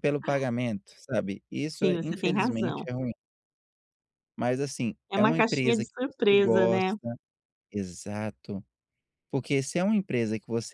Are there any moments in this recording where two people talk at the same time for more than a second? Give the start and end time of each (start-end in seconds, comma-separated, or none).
1.7-2.9, 5.1-6.9